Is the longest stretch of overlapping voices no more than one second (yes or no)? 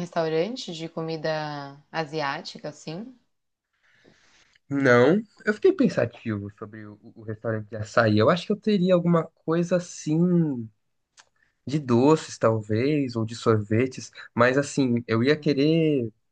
yes